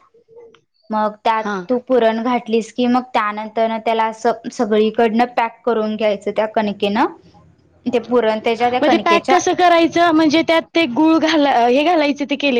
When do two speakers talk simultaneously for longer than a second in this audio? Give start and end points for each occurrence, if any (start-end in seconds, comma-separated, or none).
none